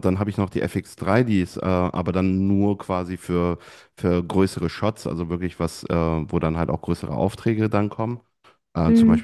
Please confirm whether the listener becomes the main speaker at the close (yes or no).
no